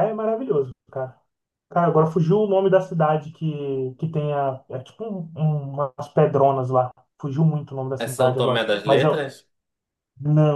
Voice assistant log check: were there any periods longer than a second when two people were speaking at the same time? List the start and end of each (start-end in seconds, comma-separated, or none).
8.0-9.2